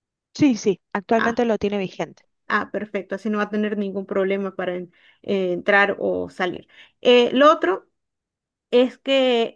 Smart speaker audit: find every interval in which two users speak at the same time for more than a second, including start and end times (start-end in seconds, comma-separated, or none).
none